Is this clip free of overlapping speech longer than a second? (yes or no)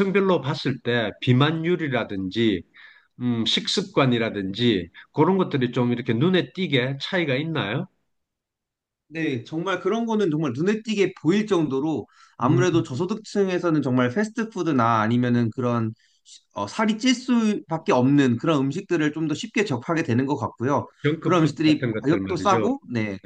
no